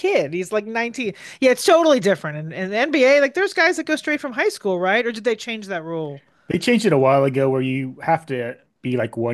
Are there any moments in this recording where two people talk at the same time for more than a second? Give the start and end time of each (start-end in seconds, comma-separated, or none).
none